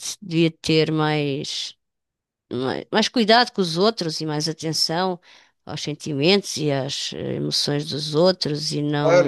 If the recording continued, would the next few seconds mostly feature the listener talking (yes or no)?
yes